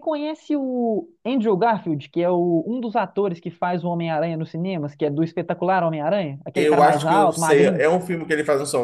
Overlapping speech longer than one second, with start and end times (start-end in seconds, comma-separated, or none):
6.5-7.8